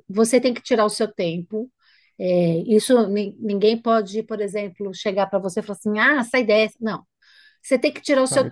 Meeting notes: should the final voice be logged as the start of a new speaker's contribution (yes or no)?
no